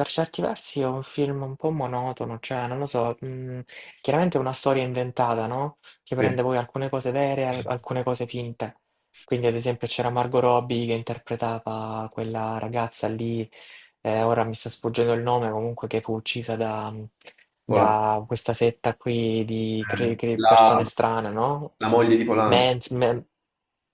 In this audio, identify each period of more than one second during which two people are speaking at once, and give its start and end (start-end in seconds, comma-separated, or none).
19.6-20.9